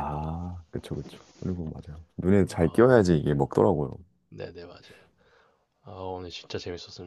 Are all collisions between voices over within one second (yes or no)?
yes